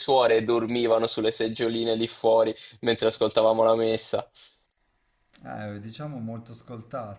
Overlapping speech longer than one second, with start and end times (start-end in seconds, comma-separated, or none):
none